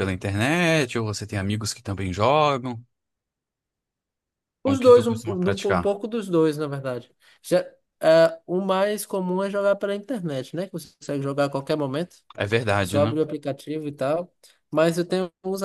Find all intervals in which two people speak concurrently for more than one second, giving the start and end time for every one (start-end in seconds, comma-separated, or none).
4.6-6.0